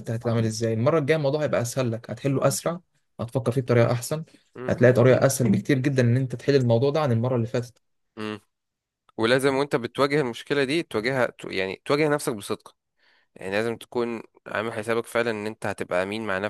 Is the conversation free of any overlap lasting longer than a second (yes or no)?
yes